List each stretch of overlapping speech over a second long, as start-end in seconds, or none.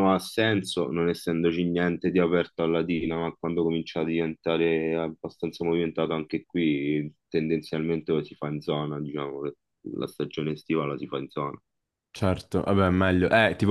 none